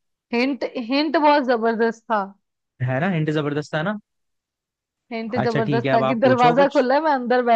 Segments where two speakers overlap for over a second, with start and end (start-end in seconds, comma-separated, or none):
5.4-6.9